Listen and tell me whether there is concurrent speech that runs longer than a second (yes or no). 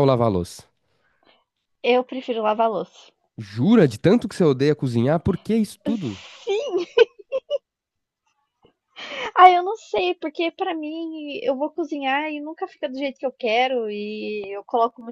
no